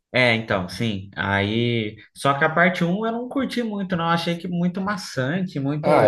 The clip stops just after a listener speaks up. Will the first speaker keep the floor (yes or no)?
no